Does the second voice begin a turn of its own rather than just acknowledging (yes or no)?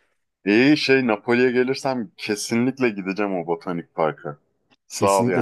yes